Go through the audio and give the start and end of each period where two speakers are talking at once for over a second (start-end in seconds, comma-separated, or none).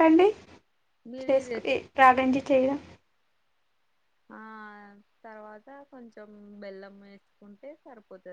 none